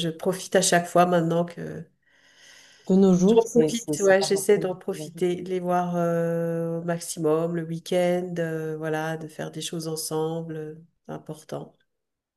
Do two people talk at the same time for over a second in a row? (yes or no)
yes